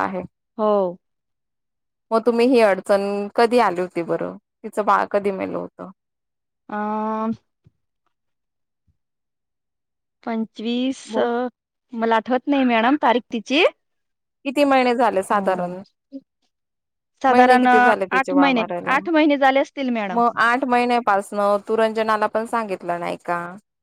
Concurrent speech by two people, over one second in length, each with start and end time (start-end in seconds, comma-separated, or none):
17.3-18.9